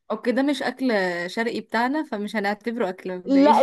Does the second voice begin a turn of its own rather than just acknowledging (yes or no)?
yes